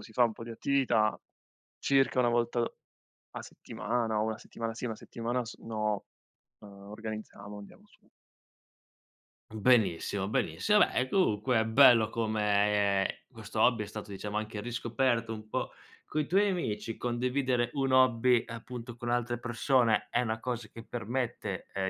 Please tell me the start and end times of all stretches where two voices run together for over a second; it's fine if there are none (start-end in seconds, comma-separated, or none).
none